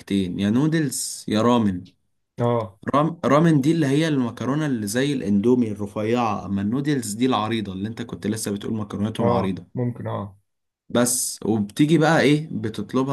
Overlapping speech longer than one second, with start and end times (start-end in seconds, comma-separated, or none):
none